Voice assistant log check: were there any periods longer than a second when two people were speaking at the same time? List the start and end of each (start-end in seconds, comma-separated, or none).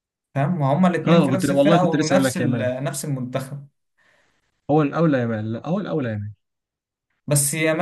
1.1-2.7